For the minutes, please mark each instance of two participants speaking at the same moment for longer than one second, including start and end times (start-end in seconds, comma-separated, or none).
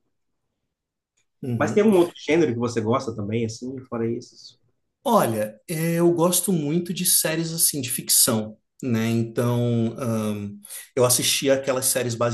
none